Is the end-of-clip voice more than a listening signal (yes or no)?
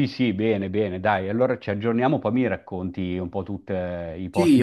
yes